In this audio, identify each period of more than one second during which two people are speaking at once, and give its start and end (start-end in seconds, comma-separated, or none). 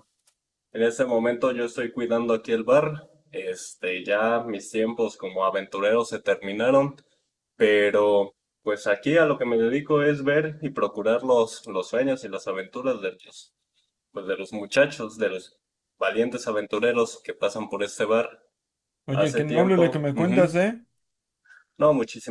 19.1-20.6